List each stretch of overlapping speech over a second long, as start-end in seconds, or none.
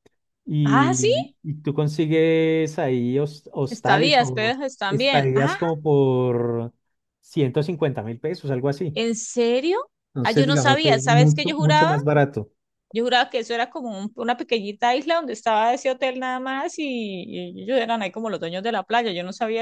3.7-5.5, 10.2-11.9